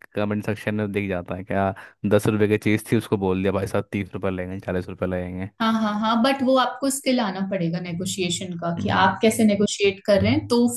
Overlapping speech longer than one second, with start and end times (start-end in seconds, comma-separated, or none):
none